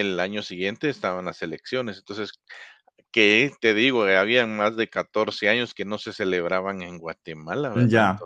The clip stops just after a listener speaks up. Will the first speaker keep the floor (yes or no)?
yes